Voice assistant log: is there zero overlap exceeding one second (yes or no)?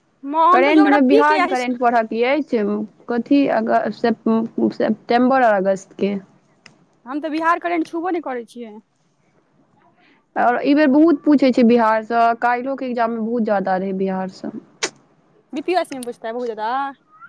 no